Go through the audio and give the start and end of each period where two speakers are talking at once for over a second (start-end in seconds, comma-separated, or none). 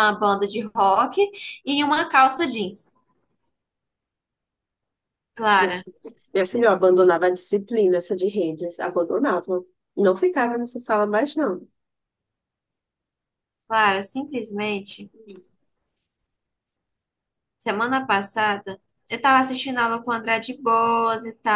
none